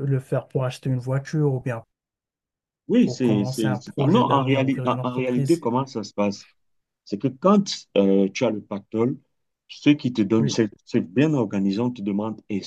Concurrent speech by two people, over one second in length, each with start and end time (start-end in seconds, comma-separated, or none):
3.0-5.6